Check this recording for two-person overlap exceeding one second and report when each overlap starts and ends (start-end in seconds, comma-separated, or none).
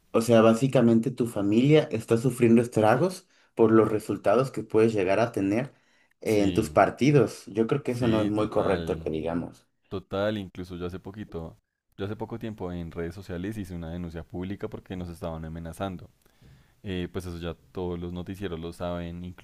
7.8-9.1